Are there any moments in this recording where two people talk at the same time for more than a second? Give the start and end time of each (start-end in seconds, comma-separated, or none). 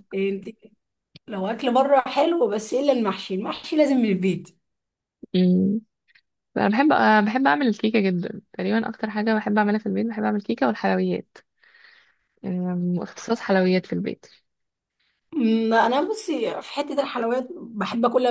none